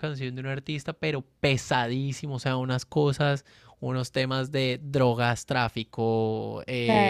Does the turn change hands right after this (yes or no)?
no